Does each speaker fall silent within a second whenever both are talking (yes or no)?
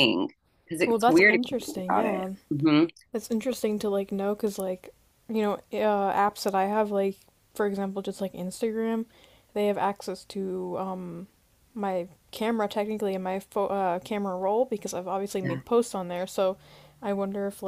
no